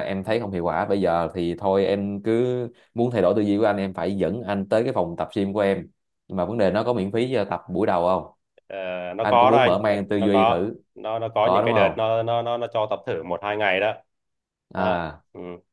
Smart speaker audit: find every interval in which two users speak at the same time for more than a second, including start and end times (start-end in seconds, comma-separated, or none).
9.2-10.7